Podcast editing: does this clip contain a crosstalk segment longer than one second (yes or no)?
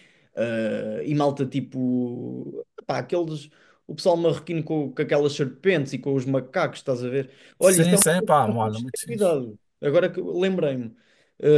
yes